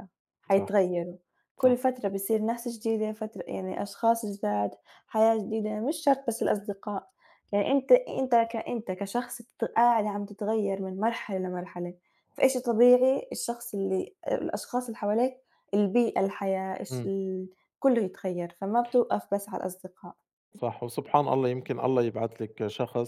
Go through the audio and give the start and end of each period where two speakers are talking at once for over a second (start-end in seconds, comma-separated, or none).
none